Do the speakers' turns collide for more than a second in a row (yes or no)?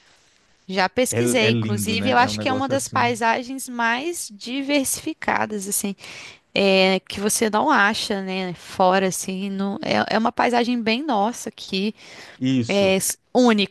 yes